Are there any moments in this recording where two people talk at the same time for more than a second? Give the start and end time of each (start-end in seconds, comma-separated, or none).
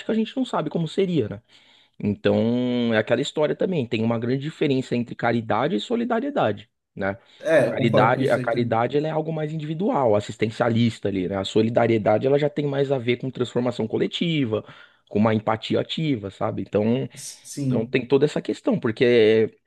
7.5-8.8